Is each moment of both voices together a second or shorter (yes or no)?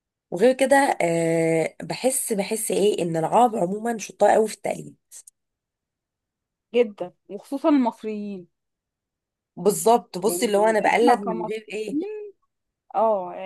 no